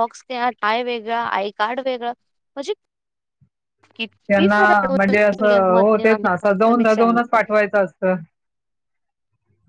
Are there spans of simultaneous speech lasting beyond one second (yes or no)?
yes